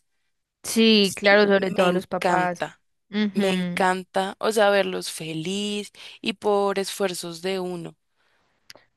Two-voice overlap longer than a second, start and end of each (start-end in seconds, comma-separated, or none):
1.0-2.6